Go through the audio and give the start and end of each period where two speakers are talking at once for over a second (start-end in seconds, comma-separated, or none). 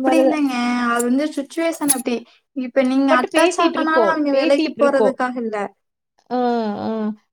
3.1-5.2